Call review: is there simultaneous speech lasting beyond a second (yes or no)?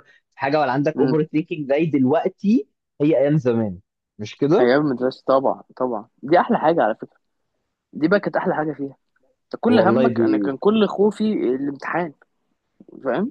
no